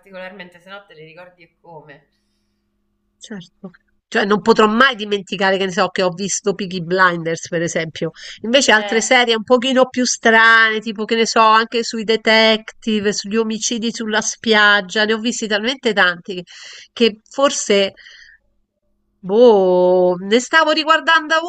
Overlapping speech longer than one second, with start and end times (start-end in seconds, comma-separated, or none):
none